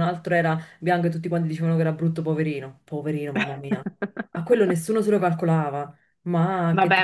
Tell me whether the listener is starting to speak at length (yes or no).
yes